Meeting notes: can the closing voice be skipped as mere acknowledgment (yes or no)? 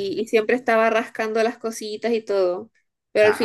yes